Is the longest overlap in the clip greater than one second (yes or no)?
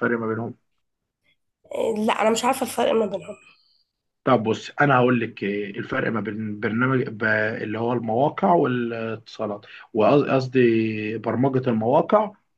no